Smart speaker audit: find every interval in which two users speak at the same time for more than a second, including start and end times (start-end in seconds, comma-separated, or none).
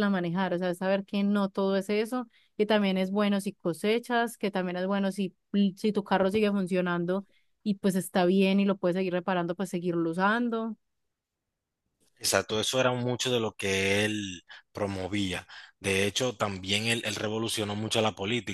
none